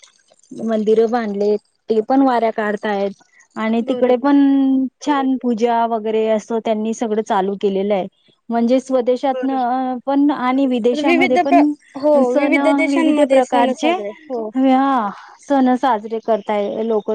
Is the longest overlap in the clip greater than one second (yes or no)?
yes